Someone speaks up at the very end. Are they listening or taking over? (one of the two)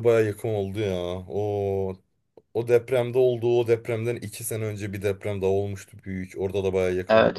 taking over